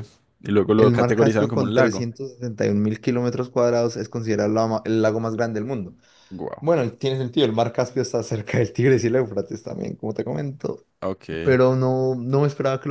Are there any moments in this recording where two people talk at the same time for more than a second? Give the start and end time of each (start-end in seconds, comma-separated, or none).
0.8-2.0